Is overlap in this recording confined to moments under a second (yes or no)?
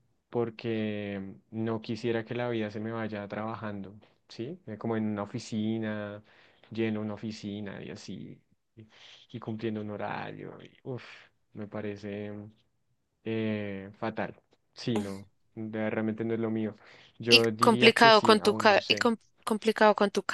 no